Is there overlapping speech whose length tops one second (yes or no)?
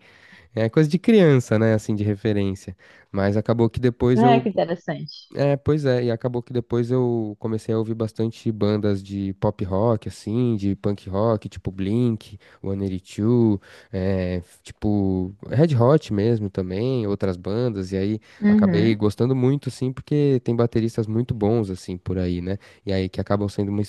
no